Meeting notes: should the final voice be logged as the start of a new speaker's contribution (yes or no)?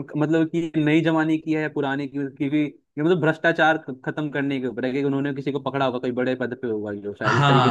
yes